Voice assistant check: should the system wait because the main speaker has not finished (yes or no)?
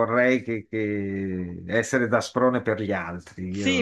no